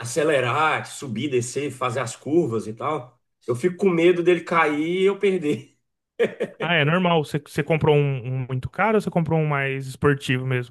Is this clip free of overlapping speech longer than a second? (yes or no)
yes